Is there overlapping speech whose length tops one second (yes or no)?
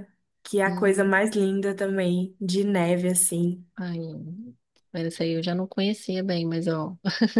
no